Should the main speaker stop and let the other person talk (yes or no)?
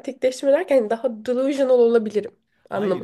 yes